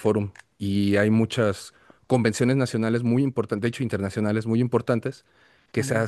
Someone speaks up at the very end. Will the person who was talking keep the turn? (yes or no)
yes